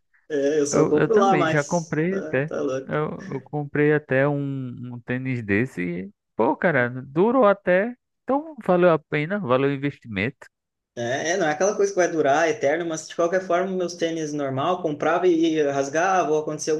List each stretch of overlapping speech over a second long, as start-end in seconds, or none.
0.7-3.0